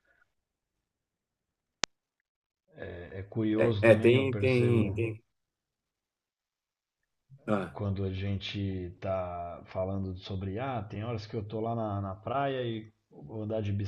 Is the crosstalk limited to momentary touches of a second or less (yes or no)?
no